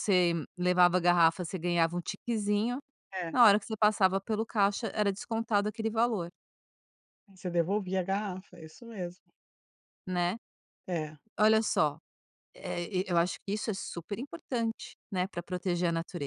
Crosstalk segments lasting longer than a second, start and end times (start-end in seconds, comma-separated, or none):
none